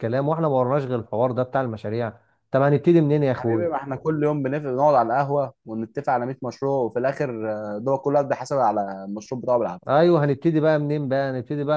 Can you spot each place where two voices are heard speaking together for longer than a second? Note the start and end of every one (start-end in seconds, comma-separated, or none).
none